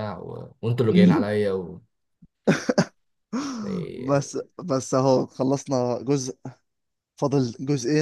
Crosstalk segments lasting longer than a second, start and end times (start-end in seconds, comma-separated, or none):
none